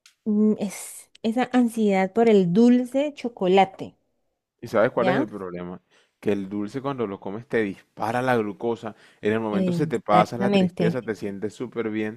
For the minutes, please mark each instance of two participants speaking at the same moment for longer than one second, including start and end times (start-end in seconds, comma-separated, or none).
9.5-11.0